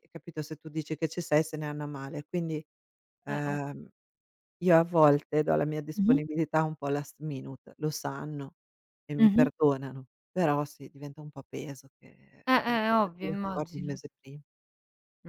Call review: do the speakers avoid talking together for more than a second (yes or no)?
no